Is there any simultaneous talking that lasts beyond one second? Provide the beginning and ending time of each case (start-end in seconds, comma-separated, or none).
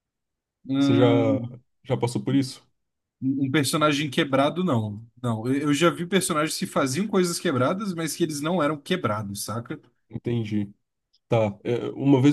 none